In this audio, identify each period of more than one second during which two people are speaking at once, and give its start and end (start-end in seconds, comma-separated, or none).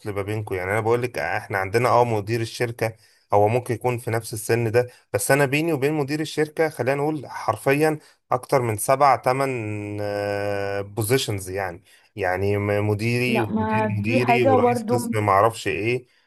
13.3-15.0